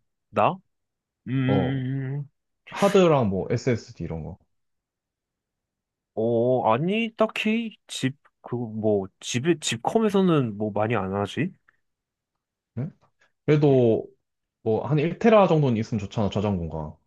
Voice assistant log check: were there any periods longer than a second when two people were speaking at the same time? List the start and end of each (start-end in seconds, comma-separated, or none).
none